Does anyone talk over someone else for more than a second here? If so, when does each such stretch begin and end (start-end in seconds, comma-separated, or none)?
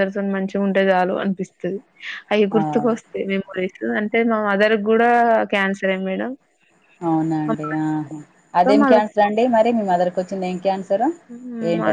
none